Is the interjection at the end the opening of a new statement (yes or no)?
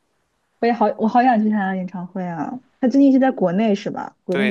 yes